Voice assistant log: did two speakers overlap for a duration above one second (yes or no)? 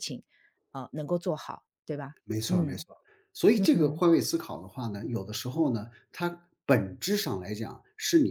no